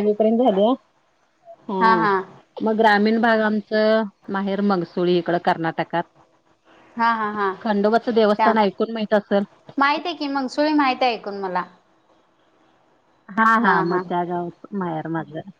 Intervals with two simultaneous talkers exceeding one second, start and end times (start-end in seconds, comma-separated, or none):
none